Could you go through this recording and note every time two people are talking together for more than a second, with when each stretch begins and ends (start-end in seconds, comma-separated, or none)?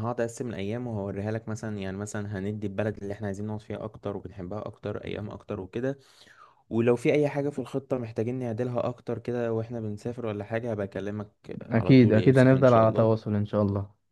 11.7-13.1